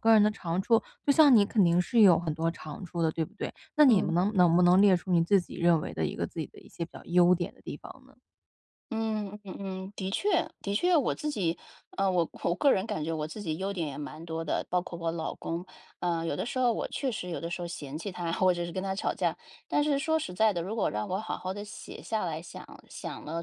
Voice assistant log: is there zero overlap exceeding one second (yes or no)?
yes